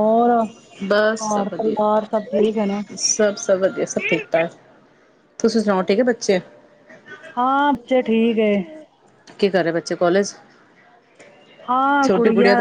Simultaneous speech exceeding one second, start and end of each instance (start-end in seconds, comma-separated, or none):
1.2-2.8